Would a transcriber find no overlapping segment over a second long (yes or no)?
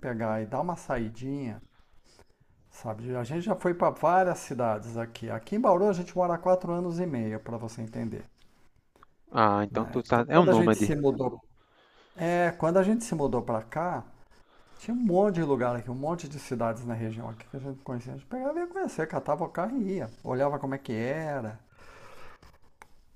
no